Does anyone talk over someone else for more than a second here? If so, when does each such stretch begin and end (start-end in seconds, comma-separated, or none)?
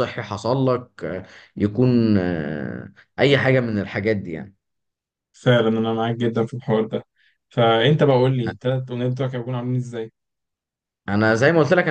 none